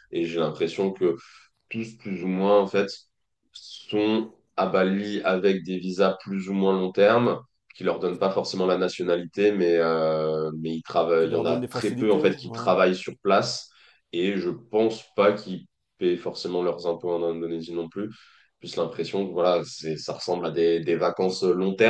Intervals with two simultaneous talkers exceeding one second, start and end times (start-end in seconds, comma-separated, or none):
11.2-12.7